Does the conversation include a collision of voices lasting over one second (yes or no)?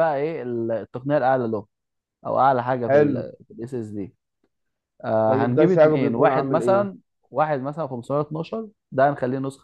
yes